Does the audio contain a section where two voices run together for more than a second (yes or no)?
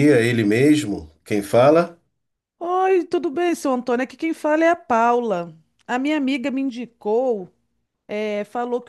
no